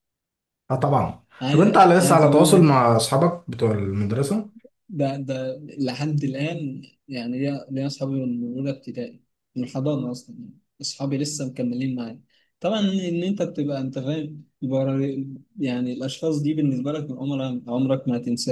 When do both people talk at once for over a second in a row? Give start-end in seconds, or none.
1.4-2.8